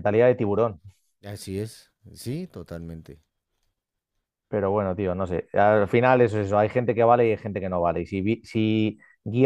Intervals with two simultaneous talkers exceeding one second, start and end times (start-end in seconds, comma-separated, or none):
none